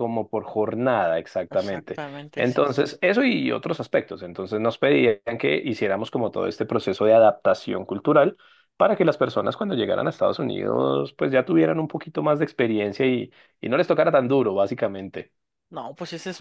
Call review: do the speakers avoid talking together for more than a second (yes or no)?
no